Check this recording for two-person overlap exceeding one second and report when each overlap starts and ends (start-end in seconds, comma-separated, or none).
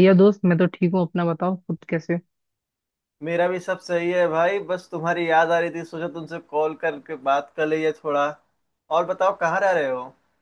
none